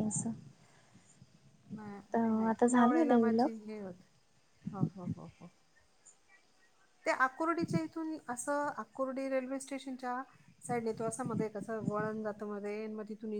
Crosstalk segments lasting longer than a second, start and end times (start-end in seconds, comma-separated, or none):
2.1-3.6